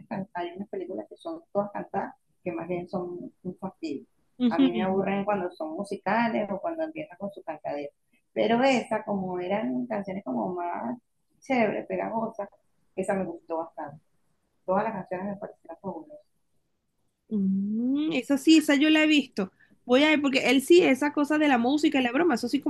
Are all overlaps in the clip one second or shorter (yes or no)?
yes